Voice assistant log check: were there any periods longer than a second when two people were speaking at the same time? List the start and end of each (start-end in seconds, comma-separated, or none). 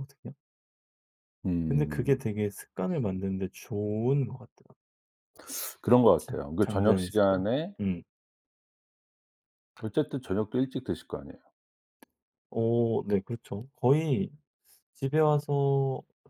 6.2-7.8